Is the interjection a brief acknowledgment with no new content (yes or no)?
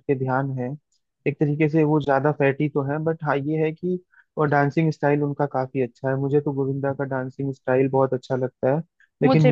yes